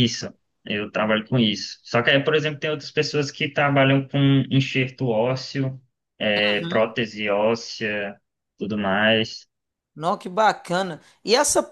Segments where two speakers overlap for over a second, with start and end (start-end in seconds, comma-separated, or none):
none